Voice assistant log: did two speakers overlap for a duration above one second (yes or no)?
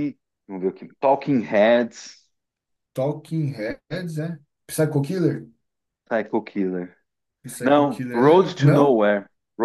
yes